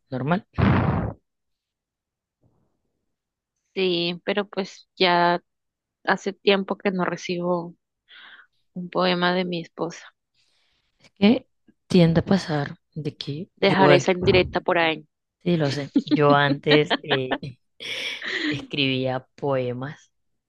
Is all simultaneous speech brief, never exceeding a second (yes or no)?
yes